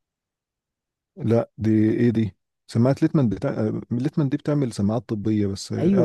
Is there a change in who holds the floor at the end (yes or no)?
yes